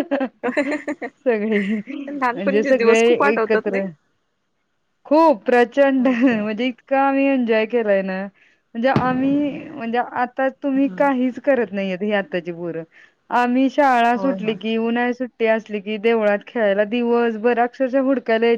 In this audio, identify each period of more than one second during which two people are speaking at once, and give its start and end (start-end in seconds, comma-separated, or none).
2.3-3.9